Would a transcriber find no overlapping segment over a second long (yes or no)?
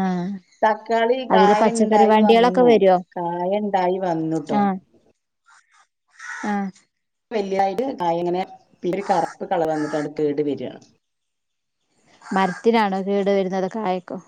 no